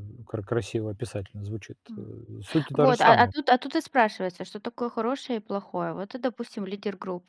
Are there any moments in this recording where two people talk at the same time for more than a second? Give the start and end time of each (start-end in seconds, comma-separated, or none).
none